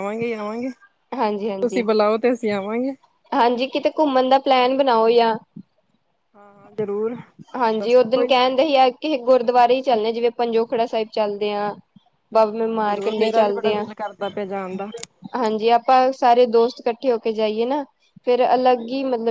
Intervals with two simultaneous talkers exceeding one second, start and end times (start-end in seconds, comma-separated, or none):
12.3-13.8